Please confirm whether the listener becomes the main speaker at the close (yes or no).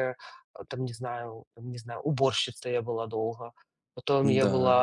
no